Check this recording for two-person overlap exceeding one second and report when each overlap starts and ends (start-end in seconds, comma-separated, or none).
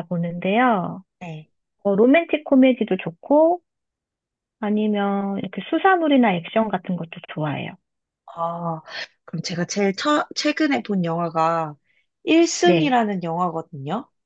none